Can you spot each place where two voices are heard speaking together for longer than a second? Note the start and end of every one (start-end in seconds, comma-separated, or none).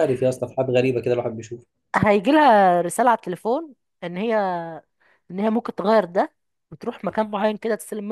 none